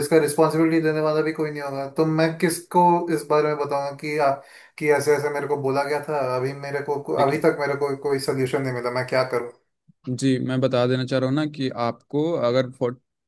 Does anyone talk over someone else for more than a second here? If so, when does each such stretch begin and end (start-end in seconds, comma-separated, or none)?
none